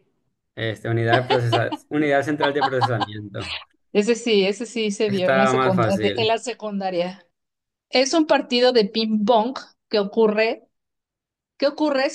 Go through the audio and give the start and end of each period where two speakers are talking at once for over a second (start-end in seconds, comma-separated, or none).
5.1-6.3